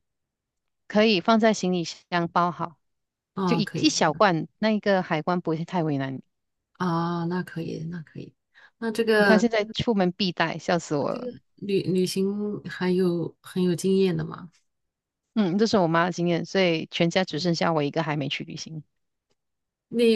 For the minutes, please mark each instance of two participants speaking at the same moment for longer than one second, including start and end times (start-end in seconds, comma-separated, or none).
none